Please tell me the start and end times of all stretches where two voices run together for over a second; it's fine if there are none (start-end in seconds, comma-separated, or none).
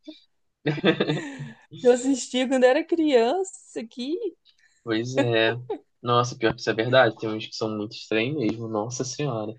none